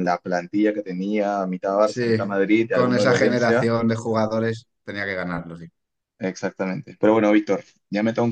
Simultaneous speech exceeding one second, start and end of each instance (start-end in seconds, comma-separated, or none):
1.8-3.7